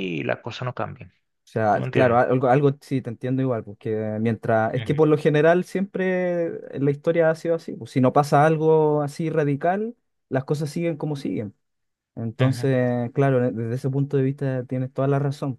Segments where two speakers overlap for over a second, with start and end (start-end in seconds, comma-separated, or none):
none